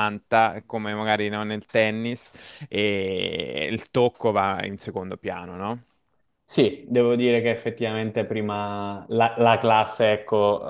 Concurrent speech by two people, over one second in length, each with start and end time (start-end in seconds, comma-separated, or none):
none